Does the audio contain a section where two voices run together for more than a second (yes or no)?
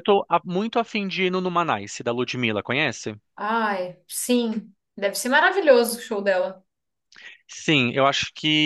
no